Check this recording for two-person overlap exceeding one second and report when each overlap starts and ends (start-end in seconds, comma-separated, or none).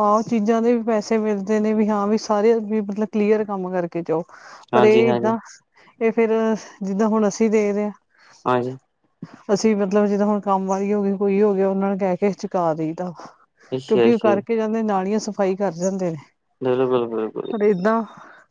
none